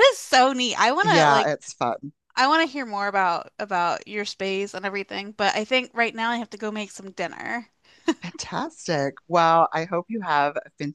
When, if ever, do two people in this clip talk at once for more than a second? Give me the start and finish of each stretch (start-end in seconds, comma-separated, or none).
none